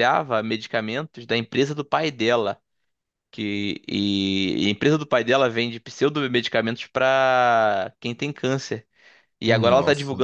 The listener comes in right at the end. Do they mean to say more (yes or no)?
no